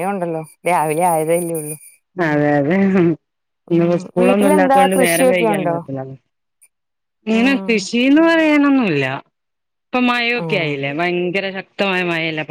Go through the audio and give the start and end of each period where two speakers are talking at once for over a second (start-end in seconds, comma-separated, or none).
3.8-5.8